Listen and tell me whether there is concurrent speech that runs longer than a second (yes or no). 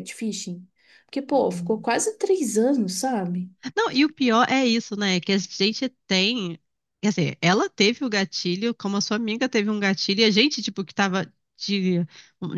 no